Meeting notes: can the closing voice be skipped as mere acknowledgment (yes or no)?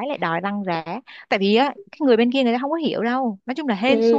no